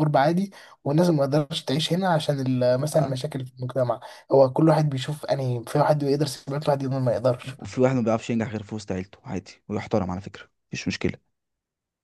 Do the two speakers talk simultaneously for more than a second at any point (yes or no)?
no